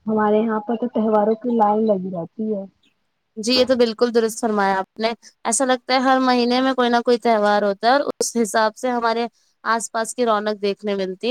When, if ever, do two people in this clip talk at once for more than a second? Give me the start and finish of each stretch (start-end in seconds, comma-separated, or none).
none